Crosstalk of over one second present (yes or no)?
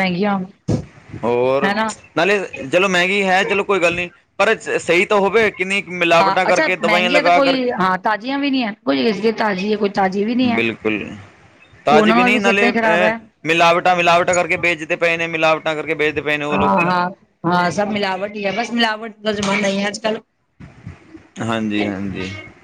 yes